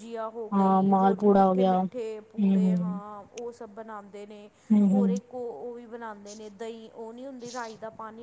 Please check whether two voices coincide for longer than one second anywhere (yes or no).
yes